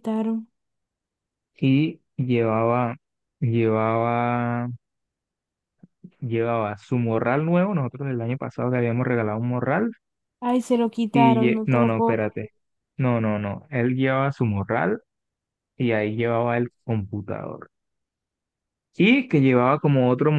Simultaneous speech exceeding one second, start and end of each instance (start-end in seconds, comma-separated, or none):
11.1-12.5